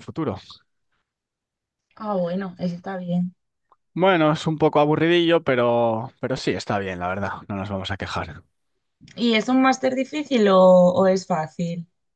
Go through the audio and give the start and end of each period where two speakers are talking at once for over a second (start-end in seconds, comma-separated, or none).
none